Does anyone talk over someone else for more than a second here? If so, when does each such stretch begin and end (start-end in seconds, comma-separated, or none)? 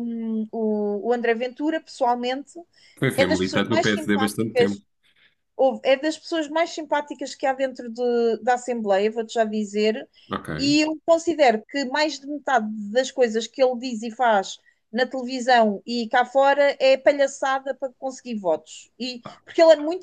3.2-4.8